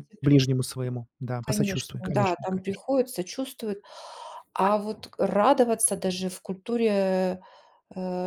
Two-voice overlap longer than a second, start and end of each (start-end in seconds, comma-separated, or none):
1.4-2.8